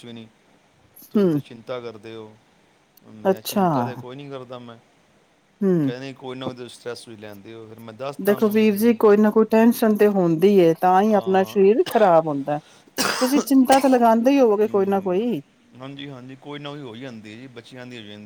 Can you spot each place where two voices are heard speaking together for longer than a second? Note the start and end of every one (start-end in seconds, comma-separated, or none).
none